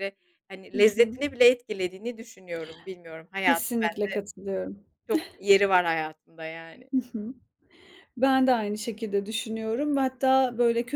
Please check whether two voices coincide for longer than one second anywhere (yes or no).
no